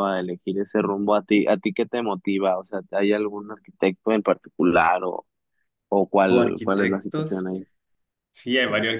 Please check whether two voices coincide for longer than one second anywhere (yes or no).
yes